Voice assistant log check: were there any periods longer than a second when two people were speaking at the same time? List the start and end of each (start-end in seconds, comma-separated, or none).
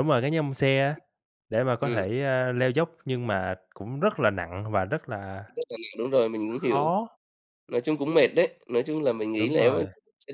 none